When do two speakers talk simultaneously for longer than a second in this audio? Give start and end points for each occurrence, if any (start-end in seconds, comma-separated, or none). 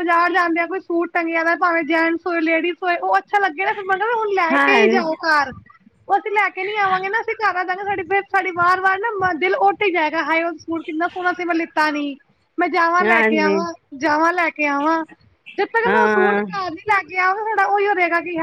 none